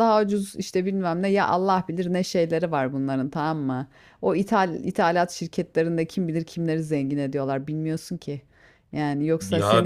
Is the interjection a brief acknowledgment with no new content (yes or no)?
no